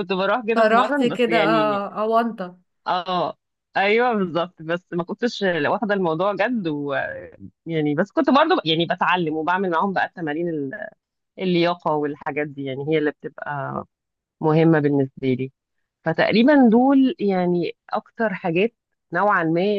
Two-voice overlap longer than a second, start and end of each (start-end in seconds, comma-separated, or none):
0.6-1.8